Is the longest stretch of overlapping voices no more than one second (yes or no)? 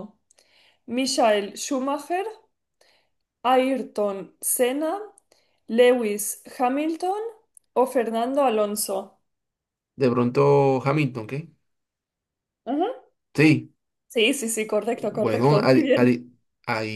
no